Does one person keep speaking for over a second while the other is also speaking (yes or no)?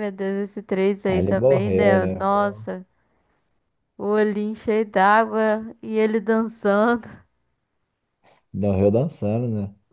yes